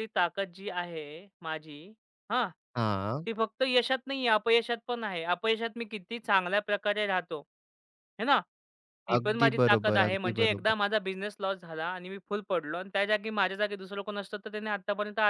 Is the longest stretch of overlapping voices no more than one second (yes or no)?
no